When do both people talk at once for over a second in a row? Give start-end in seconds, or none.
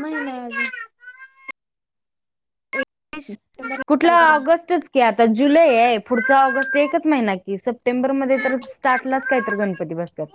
8.3-9.7